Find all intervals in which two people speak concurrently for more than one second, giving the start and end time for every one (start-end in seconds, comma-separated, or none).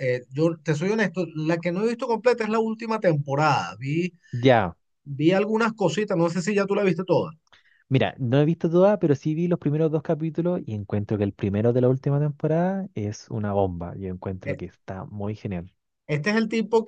none